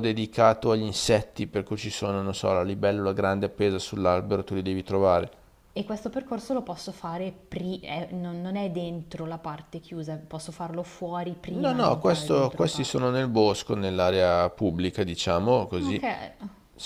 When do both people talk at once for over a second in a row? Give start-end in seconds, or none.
11.5-13.0